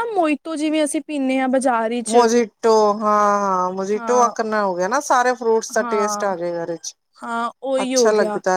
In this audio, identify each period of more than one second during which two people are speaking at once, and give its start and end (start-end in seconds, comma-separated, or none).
none